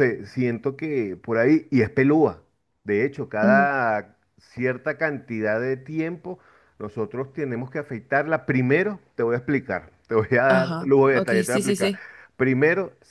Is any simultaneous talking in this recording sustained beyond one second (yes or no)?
yes